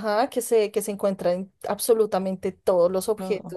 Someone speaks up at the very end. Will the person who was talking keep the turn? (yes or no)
yes